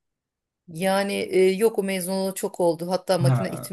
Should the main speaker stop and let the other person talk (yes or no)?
no